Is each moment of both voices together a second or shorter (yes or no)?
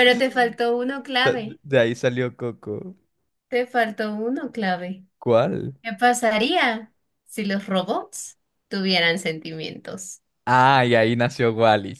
yes